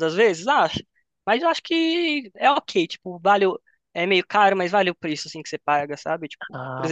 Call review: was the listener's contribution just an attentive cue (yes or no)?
yes